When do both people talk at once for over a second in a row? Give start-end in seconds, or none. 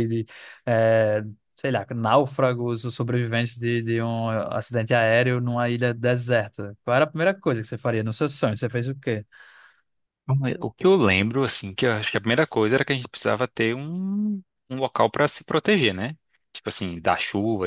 none